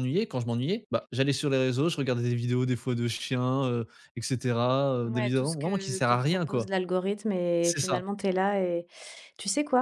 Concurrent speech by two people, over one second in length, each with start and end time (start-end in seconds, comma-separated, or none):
5.0-6.7